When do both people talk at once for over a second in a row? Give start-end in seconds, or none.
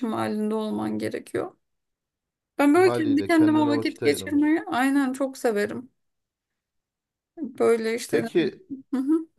2.7-4.6